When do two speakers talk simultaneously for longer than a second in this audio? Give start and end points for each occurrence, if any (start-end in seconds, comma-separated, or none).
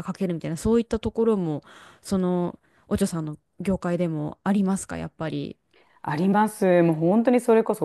none